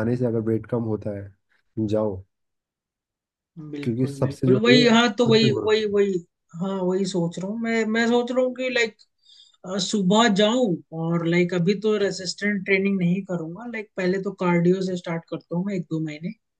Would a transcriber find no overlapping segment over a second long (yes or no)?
no